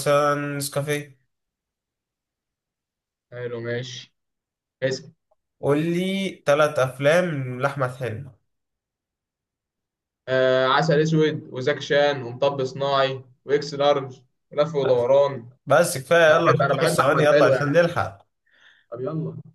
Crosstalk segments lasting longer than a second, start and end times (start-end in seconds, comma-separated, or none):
16.3-17.9